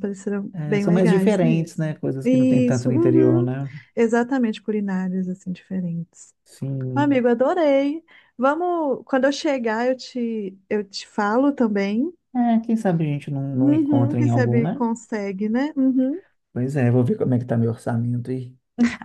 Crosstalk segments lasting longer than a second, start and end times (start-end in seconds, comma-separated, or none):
0.5-3.5, 13.5-14.8